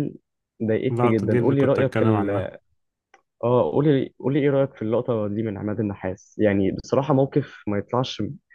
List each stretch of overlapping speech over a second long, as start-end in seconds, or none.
0.9-2.5